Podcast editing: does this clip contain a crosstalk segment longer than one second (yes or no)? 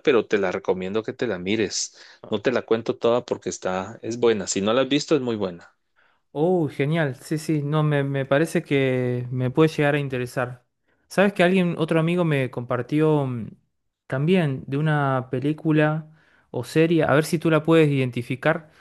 no